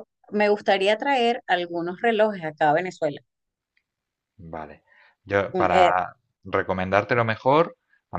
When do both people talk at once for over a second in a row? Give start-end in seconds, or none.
none